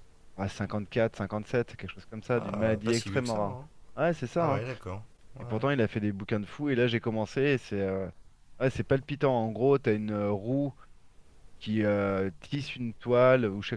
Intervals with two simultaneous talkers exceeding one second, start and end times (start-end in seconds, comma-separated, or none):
2.4-3.6